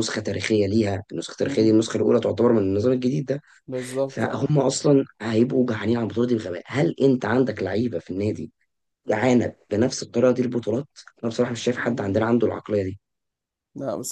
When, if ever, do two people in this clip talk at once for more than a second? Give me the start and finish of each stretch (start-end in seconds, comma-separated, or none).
none